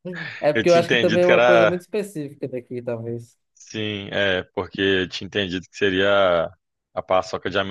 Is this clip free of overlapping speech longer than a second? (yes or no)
no